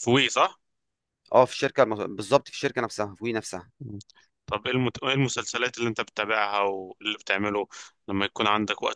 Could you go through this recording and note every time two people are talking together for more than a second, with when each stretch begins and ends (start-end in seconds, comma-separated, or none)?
none